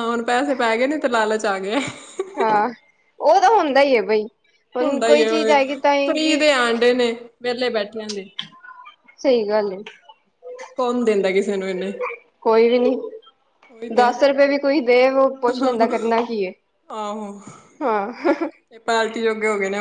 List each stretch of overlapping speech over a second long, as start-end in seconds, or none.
4.8-6.5